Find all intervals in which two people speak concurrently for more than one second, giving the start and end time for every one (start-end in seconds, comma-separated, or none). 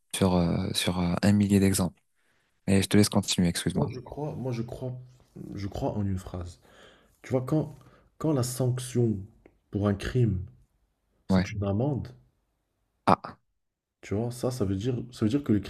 none